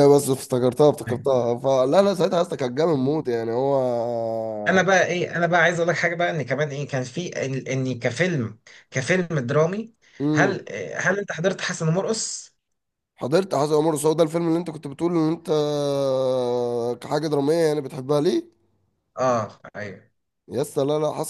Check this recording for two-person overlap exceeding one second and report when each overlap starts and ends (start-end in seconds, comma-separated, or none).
none